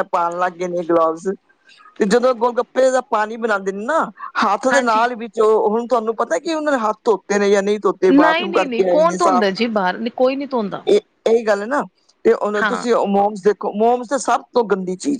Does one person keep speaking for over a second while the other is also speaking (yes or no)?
yes